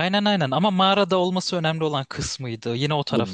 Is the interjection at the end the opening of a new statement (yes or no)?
yes